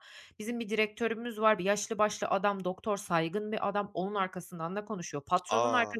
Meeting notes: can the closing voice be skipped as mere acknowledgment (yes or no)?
yes